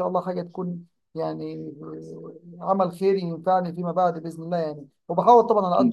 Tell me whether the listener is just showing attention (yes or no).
yes